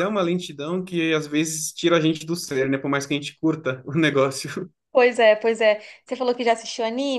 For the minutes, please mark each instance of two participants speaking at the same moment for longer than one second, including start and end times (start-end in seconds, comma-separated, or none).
none